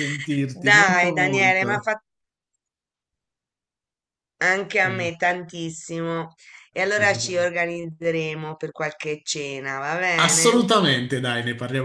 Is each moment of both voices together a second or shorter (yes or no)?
no